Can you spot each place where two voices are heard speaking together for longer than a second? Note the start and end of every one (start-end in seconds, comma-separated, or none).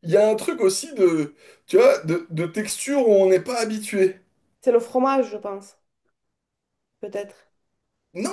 none